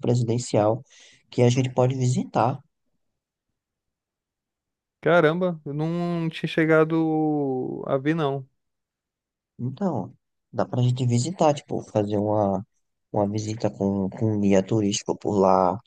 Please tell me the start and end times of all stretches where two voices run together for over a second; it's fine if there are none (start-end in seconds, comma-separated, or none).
none